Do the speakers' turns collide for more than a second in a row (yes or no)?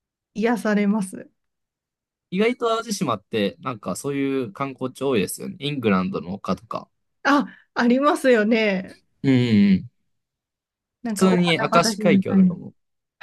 yes